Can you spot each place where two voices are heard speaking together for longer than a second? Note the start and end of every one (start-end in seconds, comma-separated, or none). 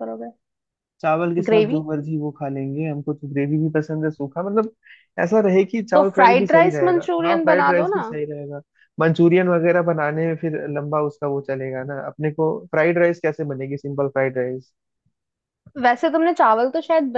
5.9-8.1